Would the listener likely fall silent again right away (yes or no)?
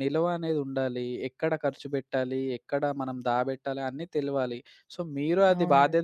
yes